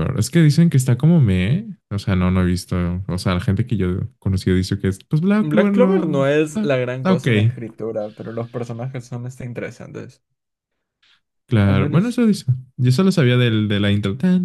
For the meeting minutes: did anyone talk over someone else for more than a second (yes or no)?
yes